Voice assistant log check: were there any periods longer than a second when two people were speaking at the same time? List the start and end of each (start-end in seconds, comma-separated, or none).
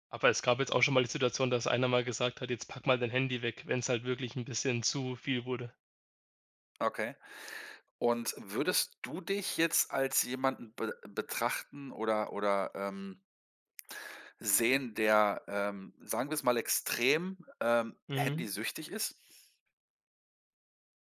none